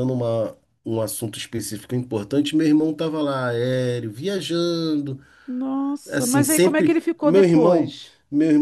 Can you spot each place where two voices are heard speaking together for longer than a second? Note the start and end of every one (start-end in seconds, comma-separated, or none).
6.1-7.9